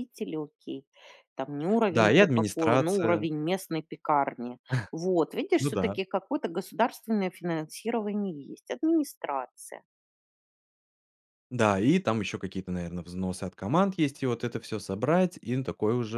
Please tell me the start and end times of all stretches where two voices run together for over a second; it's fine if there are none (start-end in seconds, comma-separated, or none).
1.9-3.2